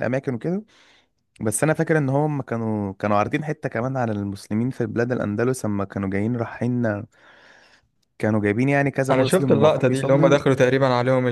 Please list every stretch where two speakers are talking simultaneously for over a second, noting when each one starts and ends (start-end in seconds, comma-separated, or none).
9.1-10.4